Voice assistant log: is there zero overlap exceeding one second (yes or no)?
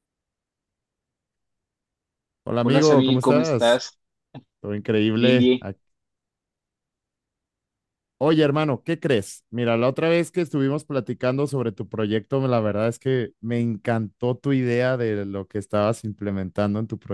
no